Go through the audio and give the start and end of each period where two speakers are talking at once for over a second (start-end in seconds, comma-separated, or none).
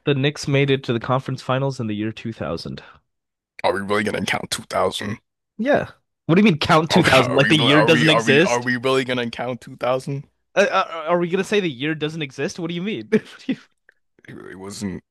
6.9-8.7